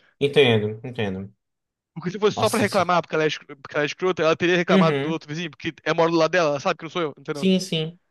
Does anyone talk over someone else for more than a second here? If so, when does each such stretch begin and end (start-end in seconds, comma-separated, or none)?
none